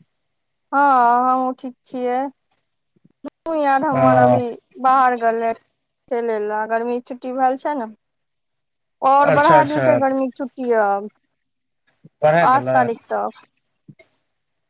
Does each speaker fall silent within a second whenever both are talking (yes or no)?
yes